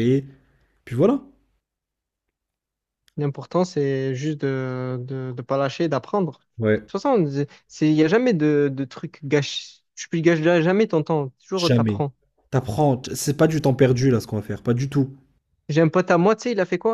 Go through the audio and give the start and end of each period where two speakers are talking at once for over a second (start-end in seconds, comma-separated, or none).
none